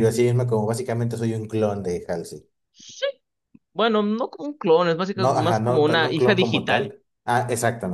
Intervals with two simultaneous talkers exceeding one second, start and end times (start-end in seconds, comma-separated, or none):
5.1-6.9